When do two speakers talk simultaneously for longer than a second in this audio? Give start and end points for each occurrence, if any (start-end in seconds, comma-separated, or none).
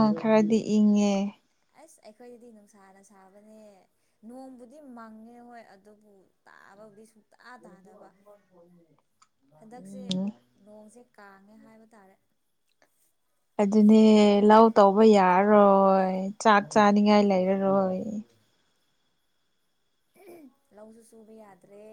none